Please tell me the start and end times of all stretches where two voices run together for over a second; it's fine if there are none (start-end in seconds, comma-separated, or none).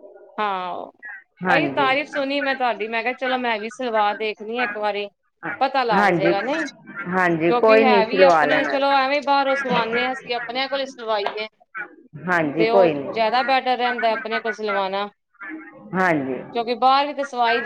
7.2-8.7